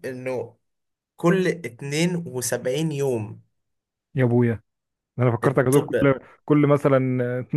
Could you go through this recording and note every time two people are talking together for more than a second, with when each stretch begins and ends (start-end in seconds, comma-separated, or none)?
none